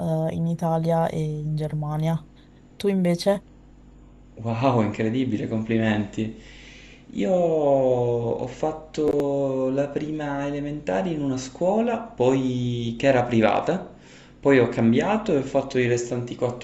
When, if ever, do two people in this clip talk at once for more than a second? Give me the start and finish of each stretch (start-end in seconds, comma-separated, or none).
none